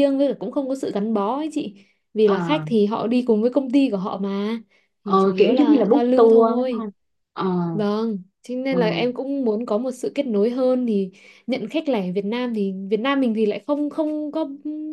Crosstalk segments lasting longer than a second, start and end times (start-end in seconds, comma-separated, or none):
5.0-6.8